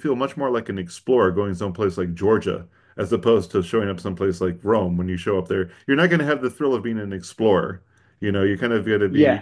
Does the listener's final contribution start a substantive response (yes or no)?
no